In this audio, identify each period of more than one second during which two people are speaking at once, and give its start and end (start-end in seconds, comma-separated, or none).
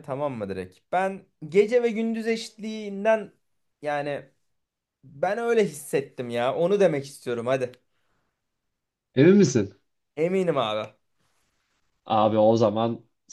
none